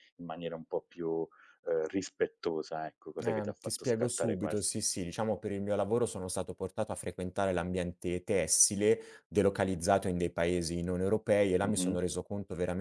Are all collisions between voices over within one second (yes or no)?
no